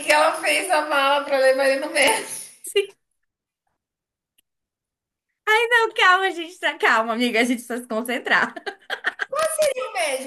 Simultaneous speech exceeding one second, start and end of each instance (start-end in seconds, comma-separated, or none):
none